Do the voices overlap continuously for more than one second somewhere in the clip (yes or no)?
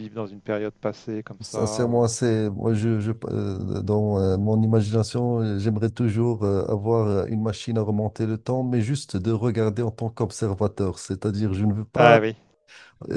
no